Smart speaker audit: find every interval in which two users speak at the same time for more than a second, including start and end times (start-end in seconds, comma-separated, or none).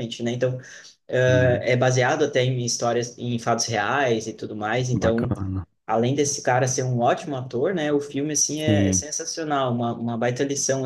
none